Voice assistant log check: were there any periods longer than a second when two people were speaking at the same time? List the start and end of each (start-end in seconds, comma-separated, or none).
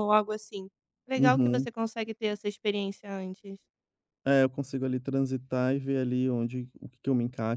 none